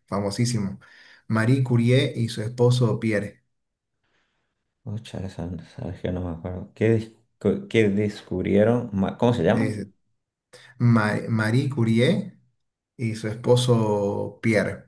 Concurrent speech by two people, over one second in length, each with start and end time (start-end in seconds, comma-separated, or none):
none